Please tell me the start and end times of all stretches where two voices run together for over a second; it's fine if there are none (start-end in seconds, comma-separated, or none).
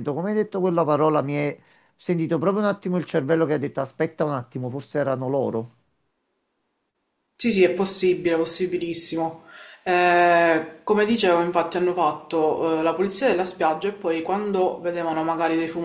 none